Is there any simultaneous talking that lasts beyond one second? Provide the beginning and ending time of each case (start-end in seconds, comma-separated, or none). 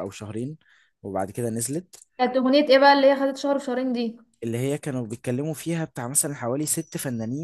none